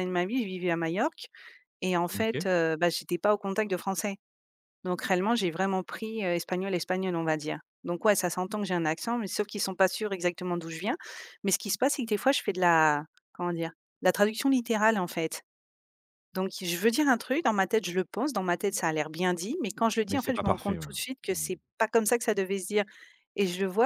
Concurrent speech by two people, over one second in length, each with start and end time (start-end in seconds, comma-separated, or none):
20.1-21.5